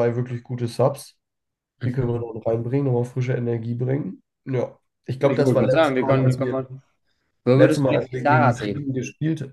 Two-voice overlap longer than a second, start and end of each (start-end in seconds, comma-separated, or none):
5.2-6.6, 7.5-8.9